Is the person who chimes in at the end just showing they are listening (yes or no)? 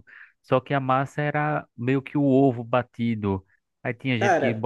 yes